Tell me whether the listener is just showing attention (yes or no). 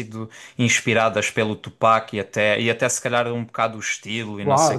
no